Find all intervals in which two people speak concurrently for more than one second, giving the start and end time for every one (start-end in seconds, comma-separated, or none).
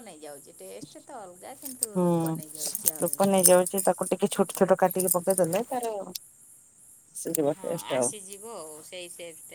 none